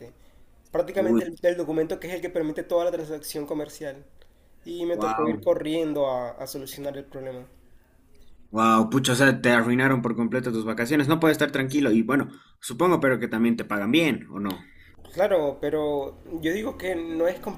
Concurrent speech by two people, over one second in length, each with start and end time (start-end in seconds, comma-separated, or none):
none